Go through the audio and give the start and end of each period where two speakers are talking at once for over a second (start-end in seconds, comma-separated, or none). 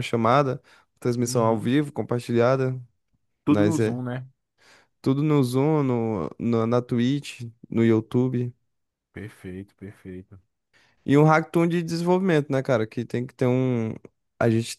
none